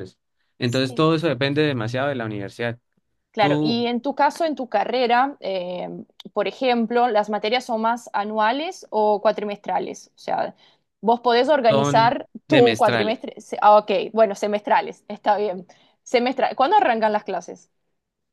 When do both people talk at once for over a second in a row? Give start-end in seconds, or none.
11.7-13.2